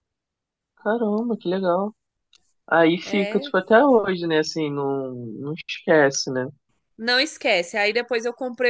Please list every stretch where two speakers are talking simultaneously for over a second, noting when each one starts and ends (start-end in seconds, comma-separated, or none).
none